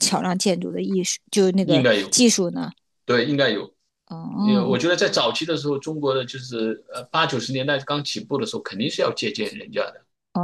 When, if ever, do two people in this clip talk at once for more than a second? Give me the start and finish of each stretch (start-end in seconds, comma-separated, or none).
none